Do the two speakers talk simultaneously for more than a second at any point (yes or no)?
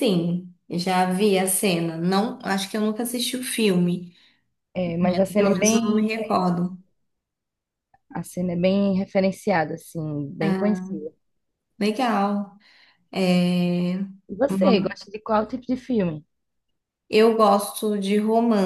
yes